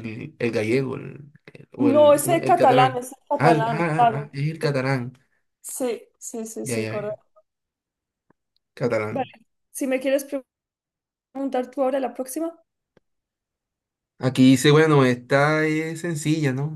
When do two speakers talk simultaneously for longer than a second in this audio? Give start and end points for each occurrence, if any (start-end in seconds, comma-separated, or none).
1.8-4.3